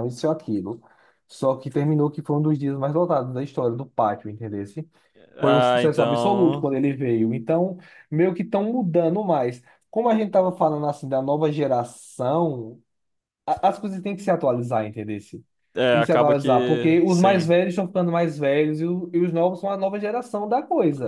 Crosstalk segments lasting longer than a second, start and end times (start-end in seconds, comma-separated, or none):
5.4-6.7, 15.9-17.5